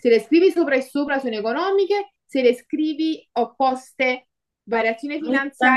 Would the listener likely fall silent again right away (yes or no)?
yes